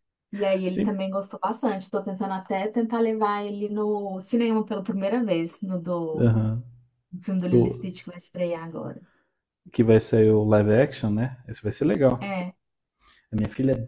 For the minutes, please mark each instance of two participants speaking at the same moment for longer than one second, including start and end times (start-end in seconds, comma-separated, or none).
none